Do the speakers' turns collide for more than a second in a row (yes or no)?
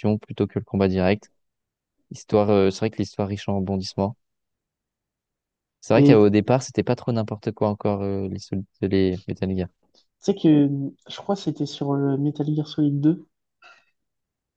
no